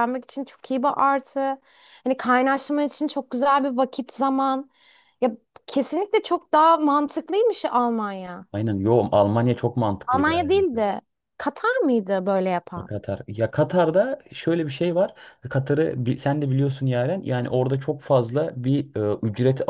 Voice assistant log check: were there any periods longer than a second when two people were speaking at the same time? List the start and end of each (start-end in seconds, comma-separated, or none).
none